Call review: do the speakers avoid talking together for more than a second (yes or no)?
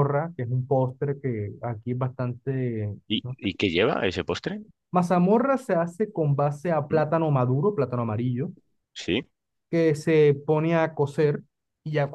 yes